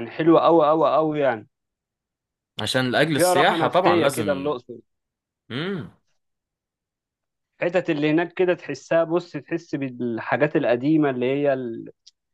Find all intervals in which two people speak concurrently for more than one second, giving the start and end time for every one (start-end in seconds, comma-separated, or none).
3.1-4.6